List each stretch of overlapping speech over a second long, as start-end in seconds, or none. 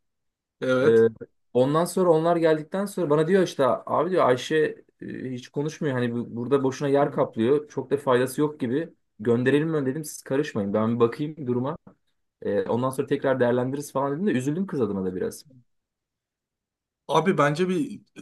none